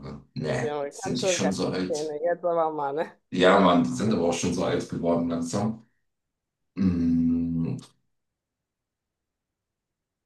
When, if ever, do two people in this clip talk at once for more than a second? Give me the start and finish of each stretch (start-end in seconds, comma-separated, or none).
0.6-2.1